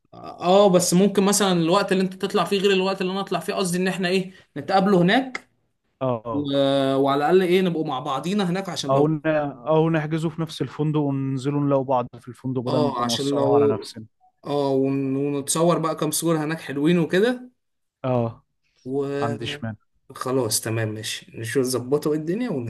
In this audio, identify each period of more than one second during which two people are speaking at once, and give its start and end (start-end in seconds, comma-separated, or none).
12.7-13.9